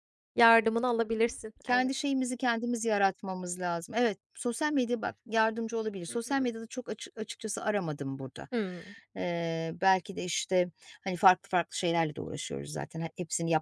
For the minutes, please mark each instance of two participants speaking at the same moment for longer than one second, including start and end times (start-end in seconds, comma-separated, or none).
none